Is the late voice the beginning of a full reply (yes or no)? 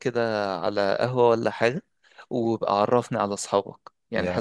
yes